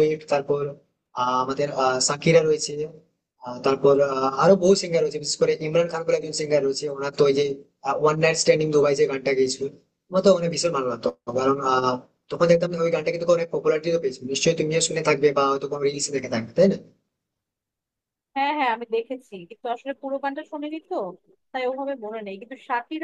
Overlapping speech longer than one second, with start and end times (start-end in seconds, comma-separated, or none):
none